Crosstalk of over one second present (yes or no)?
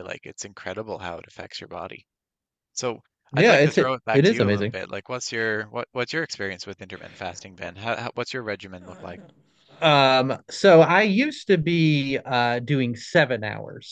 yes